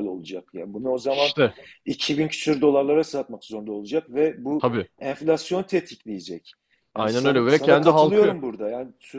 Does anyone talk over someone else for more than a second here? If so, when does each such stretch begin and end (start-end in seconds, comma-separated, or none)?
7.0-8.4